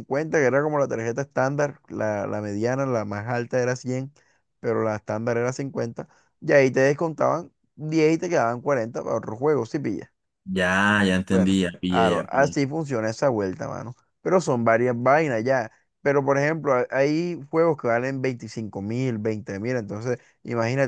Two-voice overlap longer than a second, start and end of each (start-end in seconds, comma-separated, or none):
11.3-12.6